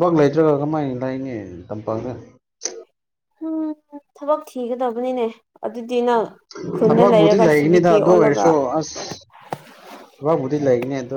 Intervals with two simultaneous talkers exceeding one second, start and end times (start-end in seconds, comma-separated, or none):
6.9-8.5